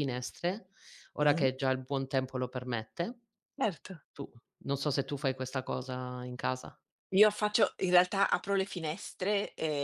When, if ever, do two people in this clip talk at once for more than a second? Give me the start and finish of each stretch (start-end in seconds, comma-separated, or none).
none